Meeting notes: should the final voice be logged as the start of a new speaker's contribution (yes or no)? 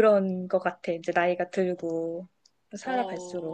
yes